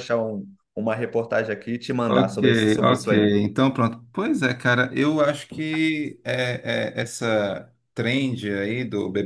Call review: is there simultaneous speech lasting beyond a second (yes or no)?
yes